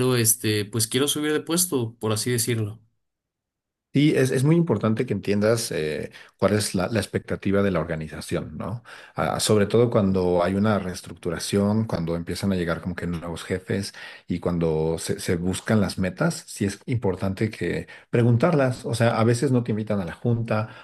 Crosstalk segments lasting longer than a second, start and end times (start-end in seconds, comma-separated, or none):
none